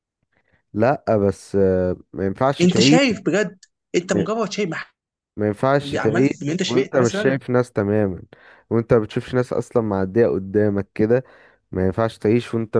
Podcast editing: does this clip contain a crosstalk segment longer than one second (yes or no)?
yes